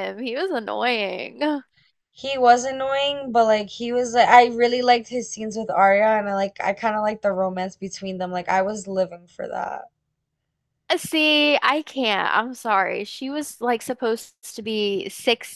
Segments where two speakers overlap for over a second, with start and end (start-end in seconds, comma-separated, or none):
none